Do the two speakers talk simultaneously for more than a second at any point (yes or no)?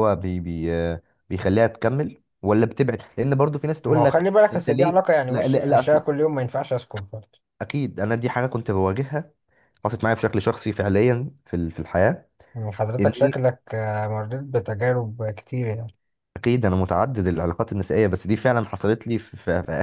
yes